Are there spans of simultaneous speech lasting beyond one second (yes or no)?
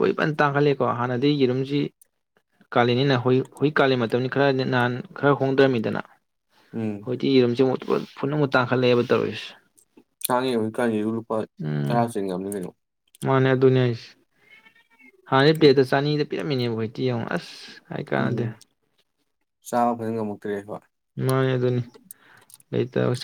no